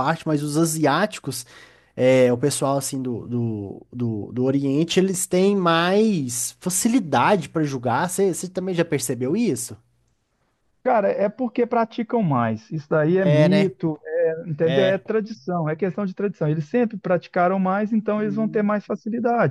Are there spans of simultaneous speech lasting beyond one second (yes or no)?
no